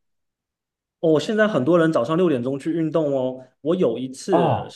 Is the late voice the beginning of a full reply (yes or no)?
no